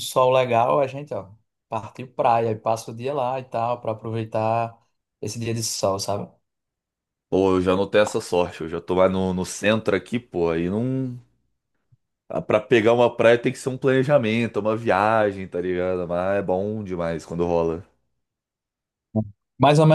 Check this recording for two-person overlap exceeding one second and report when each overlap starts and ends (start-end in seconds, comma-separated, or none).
none